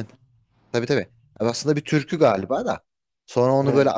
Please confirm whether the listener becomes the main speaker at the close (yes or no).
no